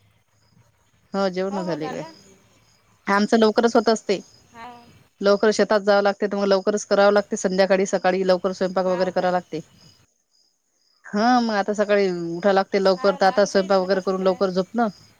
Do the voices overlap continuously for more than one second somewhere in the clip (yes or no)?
yes